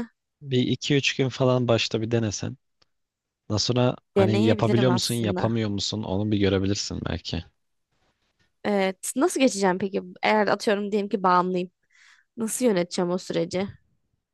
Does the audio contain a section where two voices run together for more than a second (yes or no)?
yes